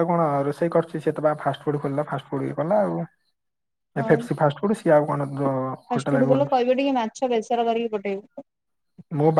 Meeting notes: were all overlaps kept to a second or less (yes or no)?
yes